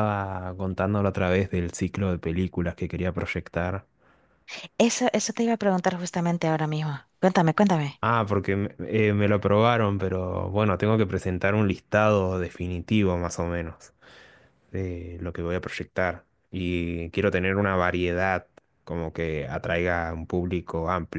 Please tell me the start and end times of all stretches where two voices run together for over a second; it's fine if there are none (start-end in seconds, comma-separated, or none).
none